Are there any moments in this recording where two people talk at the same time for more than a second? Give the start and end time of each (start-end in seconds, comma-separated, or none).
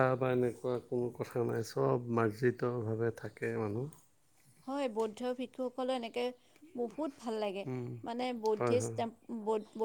none